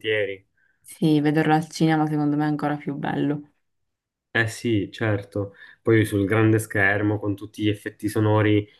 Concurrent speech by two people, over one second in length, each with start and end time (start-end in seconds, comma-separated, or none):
none